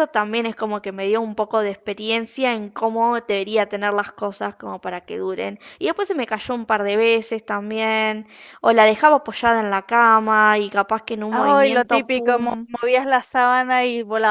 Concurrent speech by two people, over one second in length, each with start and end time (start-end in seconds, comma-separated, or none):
11.3-12.7